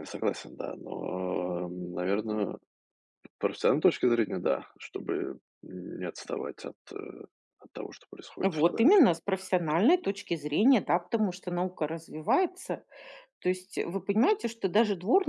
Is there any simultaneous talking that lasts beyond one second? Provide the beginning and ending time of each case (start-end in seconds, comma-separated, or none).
none